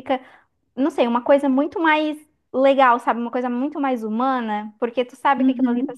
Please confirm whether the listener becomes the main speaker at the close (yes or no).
no